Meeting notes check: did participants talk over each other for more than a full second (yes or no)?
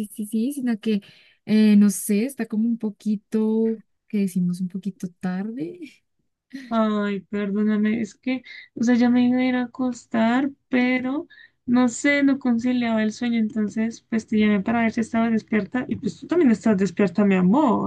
no